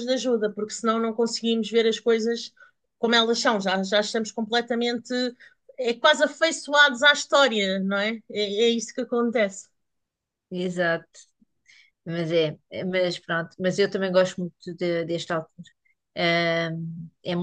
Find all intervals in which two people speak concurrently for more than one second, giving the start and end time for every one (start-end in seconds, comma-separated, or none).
none